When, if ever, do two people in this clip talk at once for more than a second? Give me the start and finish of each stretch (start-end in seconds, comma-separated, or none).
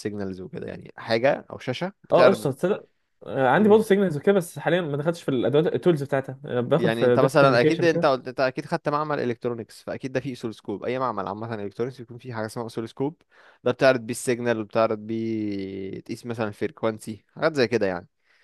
6.8-8.1